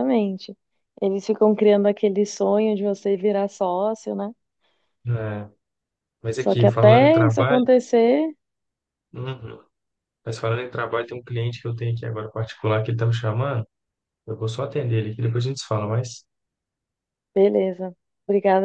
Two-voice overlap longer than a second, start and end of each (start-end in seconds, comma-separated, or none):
6.4-7.7